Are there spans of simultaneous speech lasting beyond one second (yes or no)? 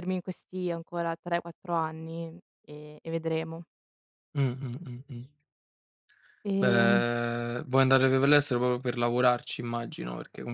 no